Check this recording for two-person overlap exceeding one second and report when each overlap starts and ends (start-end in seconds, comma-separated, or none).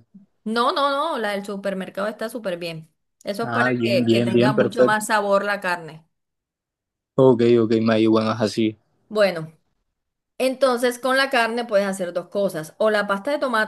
3.4-5.0